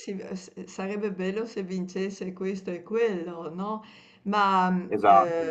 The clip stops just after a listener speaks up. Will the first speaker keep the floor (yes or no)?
yes